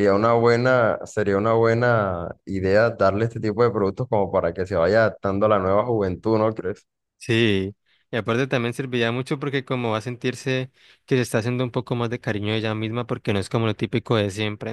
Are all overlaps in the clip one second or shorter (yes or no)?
yes